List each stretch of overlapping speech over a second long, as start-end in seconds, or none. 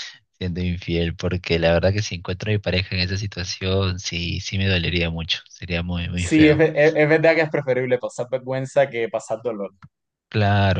none